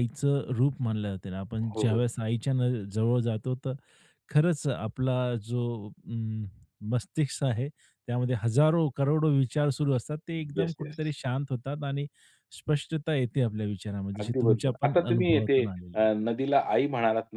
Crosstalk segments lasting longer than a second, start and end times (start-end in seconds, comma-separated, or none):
14.2-16.1